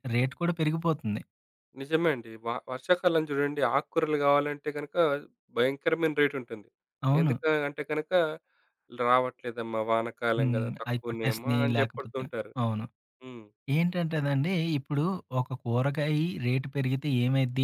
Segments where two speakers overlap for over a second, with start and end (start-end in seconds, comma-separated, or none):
10.4-12.2